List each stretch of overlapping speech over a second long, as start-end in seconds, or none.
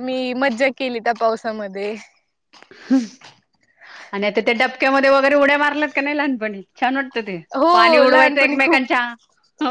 7.5-8.8